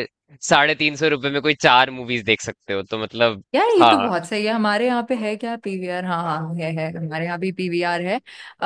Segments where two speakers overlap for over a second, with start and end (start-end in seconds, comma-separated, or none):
none